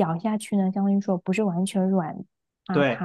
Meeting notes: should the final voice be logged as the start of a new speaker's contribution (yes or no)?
yes